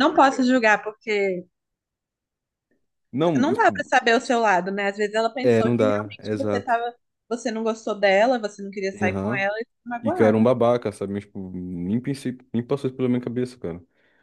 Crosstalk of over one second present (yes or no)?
yes